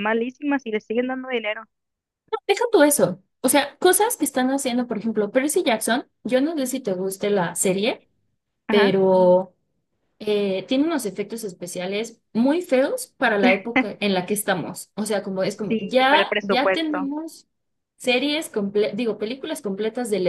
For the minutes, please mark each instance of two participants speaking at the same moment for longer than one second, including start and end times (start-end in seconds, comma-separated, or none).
15.7-17.1